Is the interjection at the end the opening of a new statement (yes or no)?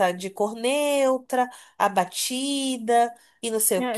yes